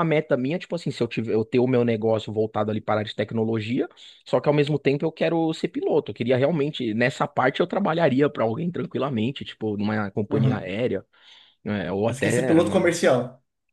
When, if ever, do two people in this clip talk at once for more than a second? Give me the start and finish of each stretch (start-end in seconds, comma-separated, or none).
none